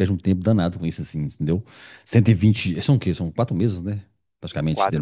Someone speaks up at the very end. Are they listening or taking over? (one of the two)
listening